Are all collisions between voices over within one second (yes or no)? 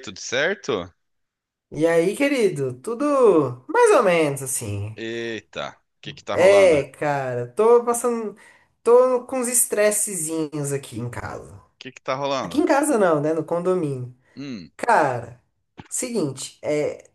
yes